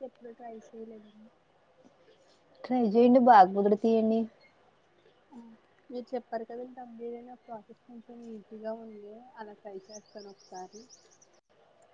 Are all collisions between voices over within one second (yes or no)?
yes